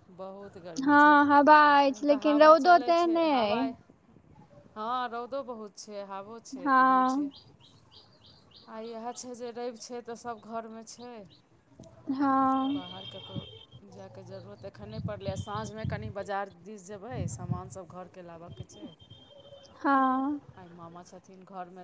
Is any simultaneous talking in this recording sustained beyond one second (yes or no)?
yes